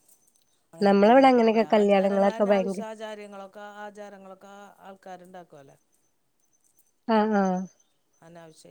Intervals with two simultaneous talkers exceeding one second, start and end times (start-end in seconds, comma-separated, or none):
0.9-2.8